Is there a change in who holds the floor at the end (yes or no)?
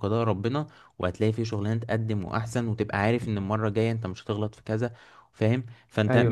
no